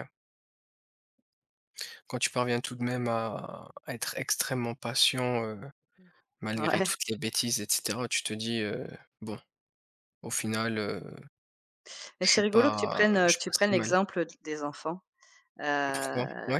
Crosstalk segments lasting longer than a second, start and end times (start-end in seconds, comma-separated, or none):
12.2-14.0